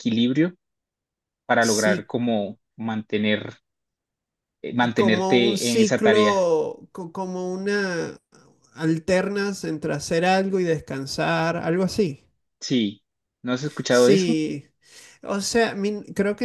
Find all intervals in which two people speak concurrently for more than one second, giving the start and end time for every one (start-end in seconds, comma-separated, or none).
5.0-6.5